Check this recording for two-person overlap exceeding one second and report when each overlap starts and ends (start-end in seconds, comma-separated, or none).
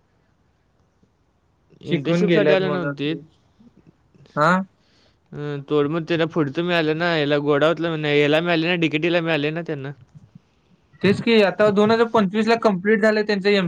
1.9-3.2